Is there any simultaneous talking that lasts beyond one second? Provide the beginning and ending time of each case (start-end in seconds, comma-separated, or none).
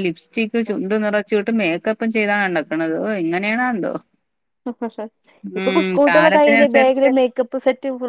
5.6-7.1